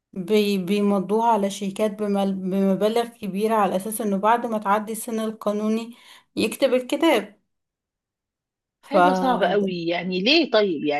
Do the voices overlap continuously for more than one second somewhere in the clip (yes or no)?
no